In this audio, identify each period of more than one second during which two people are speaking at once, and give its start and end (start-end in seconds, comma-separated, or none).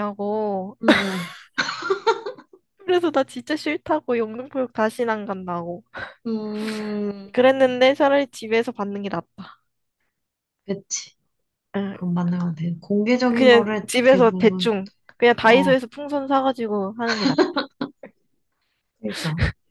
13.3-14.7